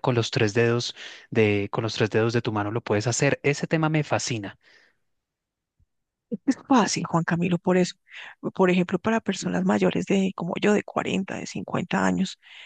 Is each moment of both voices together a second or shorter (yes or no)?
yes